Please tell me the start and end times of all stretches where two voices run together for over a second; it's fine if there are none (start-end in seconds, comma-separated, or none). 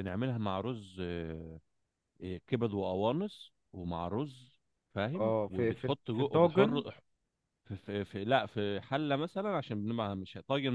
5.2-6.8